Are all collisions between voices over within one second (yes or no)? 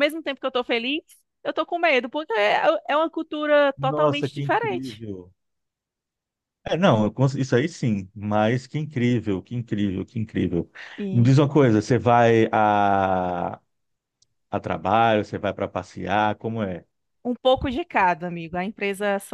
no